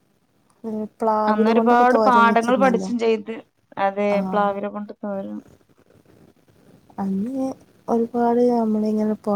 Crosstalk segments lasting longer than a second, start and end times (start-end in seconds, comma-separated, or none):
1.3-2.9